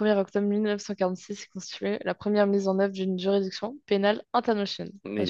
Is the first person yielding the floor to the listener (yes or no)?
yes